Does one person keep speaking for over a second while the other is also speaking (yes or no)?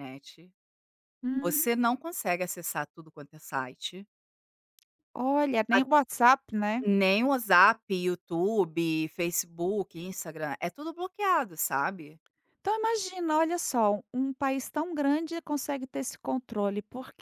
no